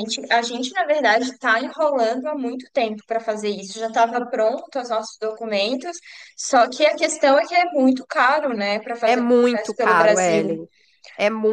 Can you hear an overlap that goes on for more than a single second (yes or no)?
yes